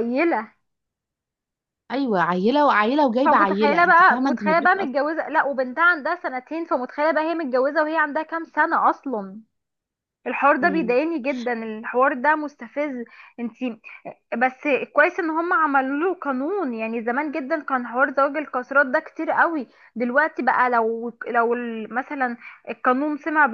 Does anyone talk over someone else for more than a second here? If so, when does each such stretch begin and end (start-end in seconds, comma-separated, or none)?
3.2-5.1